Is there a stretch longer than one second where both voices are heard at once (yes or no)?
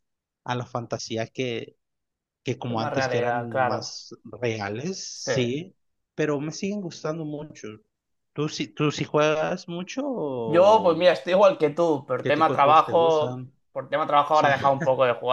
yes